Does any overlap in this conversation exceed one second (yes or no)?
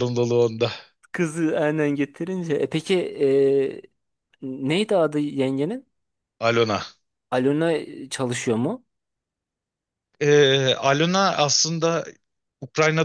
no